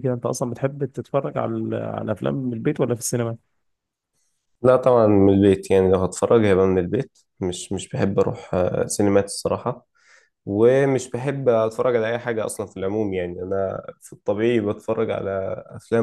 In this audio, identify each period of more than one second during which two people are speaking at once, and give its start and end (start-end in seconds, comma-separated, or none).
none